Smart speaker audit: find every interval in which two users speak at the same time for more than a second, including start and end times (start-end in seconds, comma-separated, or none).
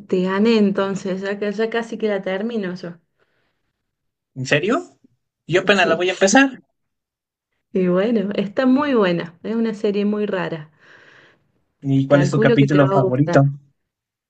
12.1-13.4